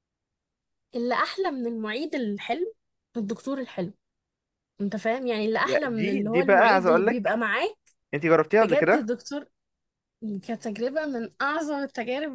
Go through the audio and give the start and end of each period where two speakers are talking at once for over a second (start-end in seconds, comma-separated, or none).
5.6-7.4